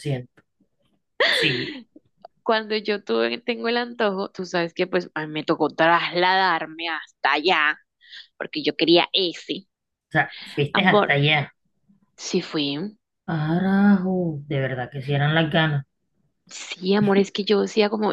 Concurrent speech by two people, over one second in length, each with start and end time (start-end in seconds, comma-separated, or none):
none